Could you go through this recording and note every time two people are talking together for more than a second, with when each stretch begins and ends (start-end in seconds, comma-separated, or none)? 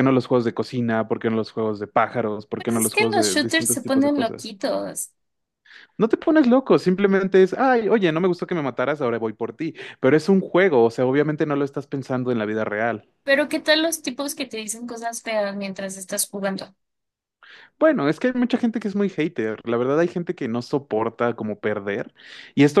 2.6-4.6